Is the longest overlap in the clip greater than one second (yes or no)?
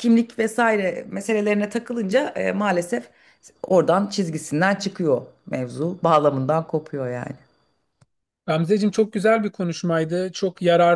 no